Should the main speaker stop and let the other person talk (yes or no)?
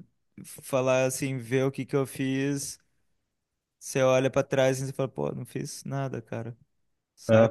yes